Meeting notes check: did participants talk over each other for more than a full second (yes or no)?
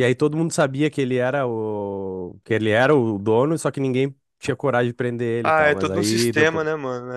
yes